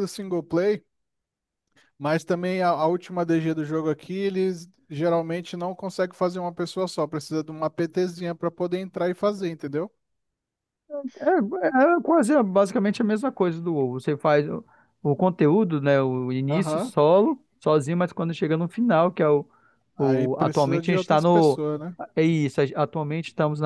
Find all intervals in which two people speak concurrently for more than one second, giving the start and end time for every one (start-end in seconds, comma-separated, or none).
20.0-21.6